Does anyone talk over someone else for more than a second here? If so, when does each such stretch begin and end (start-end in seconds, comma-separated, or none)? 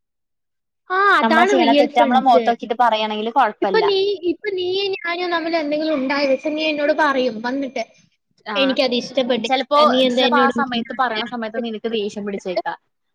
10.2-12.7